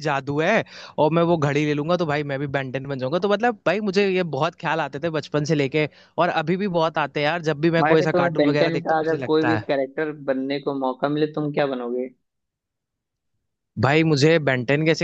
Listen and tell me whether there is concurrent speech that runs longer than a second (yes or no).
yes